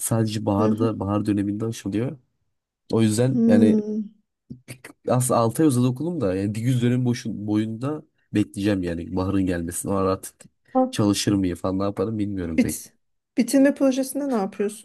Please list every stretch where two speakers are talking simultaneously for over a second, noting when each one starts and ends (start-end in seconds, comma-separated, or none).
none